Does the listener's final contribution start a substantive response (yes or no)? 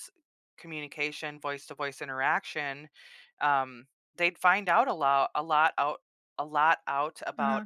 no